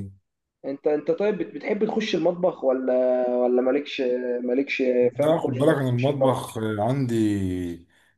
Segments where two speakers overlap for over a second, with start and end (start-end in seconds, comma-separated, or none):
5.2-6.5